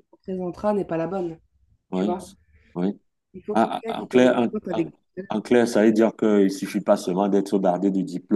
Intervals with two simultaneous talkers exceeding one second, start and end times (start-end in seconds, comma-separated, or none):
3.5-4.9